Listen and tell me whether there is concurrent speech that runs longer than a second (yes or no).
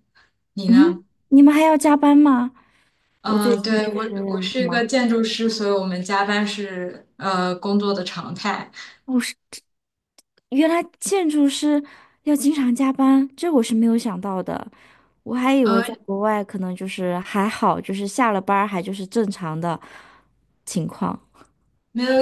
yes